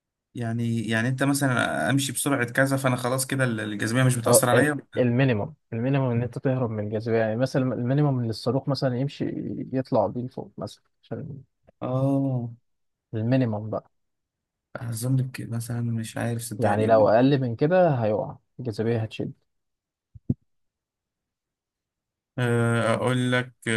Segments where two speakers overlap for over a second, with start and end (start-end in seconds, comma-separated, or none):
none